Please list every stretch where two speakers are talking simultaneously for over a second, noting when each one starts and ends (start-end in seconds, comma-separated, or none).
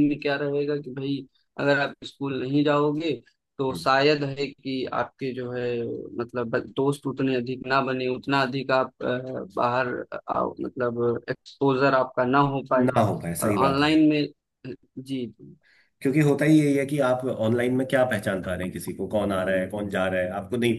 none